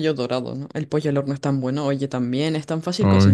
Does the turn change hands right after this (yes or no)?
no